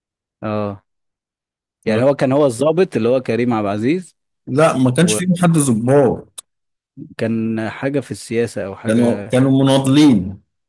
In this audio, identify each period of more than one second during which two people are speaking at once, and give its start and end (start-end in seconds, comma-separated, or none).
none